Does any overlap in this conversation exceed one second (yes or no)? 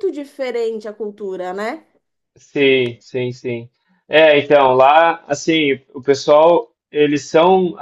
no